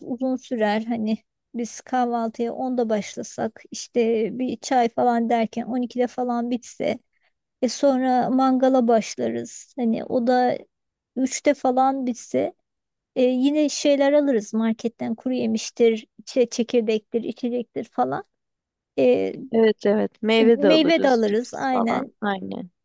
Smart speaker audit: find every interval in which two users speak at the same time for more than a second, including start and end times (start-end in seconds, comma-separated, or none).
20.4-22.1